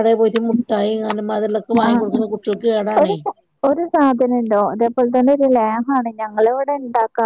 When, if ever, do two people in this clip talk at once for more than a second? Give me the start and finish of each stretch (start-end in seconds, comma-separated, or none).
none